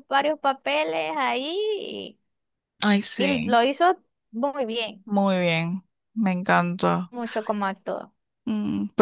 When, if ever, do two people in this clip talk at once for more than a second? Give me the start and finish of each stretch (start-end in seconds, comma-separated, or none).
none